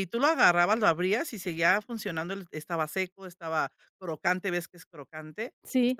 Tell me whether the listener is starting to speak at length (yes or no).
no